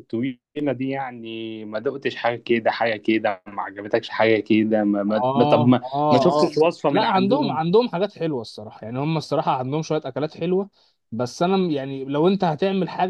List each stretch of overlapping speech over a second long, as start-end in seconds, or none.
5.1-7.6